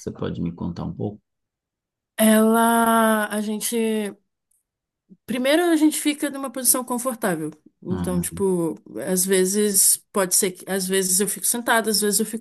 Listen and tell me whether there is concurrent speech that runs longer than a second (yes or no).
no